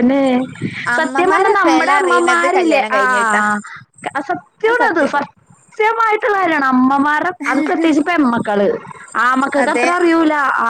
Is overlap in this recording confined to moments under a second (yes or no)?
no